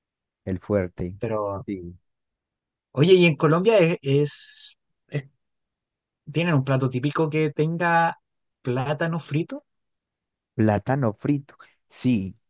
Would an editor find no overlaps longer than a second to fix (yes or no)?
yes